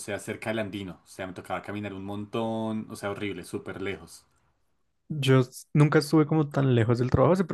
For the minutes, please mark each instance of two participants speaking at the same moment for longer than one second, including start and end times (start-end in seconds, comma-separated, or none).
none